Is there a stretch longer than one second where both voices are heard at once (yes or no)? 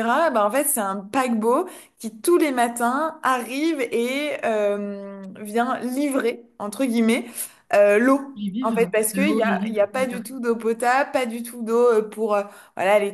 yes